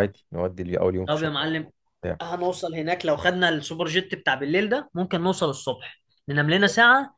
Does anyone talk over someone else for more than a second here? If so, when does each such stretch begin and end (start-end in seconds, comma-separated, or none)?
none